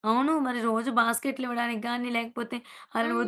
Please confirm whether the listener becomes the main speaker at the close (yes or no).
no